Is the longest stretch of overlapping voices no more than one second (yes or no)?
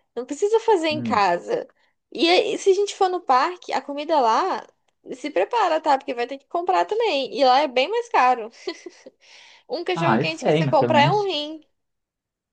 no